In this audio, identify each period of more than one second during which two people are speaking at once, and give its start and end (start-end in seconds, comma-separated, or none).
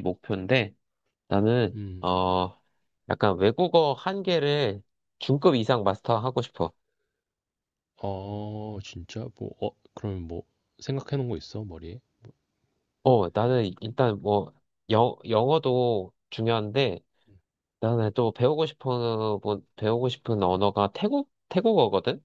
none